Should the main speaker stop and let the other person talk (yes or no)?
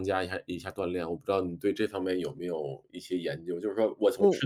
no